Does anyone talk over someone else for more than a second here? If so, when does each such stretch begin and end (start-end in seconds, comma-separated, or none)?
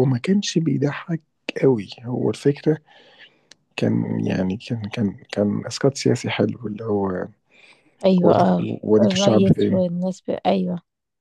8.2-9.8